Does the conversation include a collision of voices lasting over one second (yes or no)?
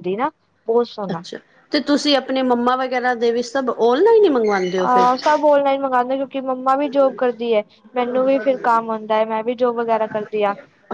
no